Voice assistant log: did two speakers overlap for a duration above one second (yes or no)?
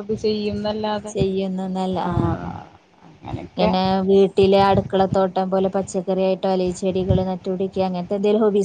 no